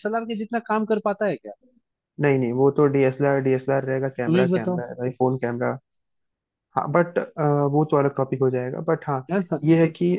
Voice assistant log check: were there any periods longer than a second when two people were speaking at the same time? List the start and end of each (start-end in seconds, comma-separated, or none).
none